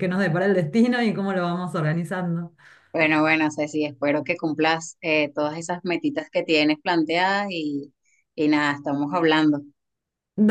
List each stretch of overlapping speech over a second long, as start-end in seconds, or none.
none